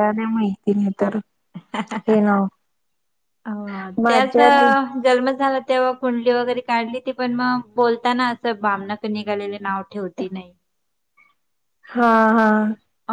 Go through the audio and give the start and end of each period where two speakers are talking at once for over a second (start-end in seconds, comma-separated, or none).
none